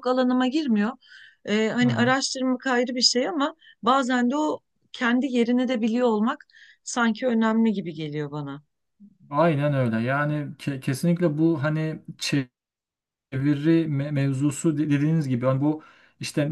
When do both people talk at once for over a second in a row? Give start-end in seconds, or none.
none